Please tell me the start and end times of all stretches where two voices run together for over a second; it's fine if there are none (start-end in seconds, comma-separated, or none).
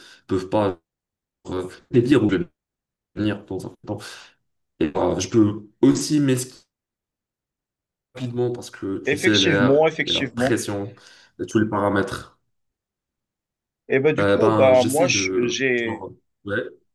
9.1-10.6, 14.2-16.1